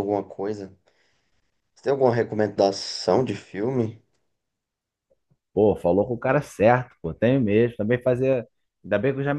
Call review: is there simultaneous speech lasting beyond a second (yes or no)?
no